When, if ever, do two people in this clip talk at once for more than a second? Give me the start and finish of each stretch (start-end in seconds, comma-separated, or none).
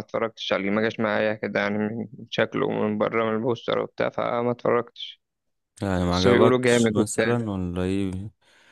6.1-7.4